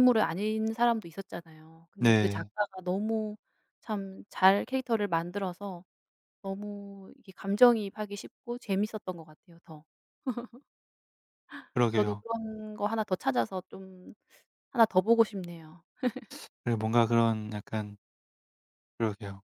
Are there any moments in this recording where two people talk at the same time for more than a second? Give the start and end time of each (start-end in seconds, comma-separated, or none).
none